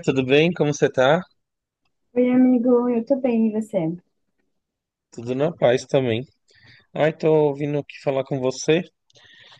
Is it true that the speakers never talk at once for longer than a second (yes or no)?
yes